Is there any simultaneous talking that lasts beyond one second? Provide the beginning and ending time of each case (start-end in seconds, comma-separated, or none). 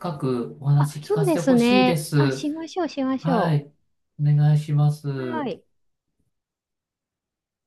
0.8-2.5